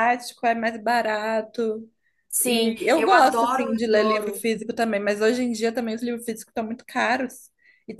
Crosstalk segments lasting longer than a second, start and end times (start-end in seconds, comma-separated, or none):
2.4-4.4